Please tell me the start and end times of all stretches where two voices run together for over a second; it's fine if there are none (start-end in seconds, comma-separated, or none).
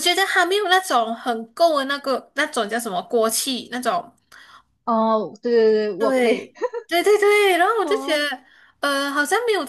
none